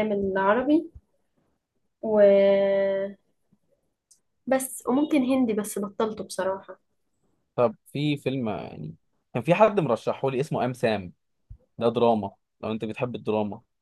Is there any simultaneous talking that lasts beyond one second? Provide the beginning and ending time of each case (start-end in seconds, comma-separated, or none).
none